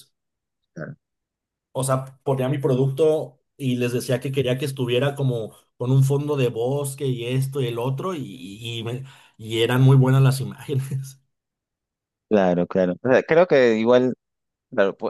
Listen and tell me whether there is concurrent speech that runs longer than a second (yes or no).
no